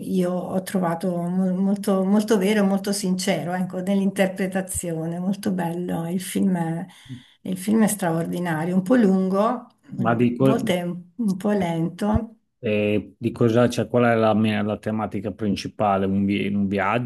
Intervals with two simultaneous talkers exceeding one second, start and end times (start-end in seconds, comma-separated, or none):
none